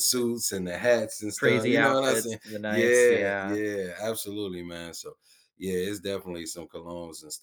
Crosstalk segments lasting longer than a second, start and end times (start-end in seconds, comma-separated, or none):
1.4-3.6